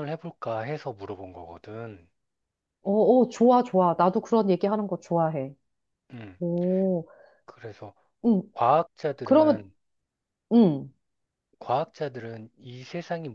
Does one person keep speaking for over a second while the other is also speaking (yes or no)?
no